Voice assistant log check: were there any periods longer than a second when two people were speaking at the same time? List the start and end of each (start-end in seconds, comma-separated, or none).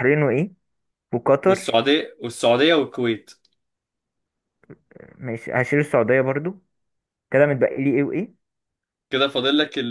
none